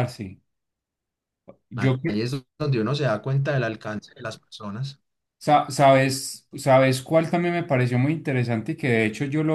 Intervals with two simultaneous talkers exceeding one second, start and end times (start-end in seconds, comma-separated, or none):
none